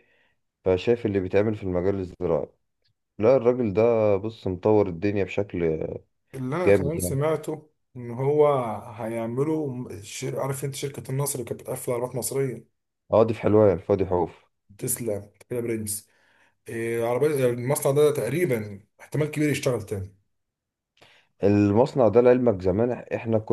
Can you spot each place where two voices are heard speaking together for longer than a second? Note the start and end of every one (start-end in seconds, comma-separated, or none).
none